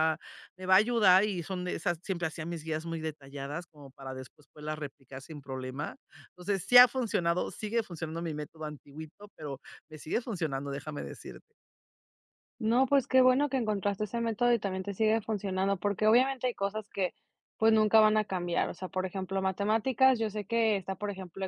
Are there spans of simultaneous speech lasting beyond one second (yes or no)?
no